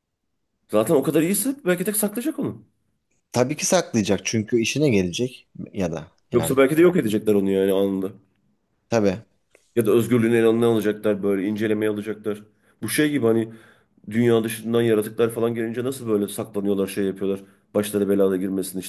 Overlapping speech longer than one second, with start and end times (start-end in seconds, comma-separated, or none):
none